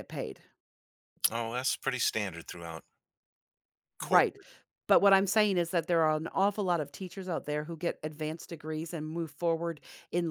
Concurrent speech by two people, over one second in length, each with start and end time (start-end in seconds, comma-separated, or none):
none